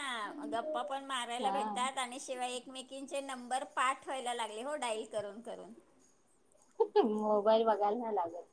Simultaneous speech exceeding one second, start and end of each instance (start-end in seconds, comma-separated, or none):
none